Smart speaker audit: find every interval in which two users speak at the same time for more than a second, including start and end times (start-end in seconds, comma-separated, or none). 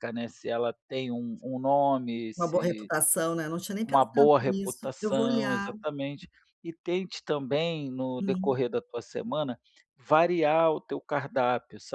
3.8-5.7